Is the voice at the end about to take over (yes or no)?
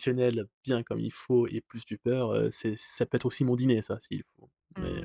yes